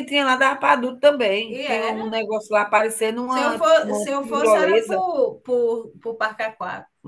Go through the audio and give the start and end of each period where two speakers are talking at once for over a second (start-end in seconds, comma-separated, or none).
3.3-5.0